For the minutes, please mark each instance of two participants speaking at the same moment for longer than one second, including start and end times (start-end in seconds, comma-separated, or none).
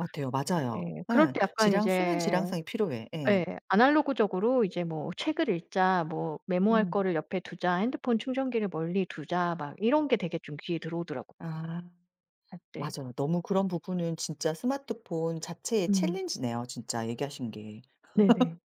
0.8-2.4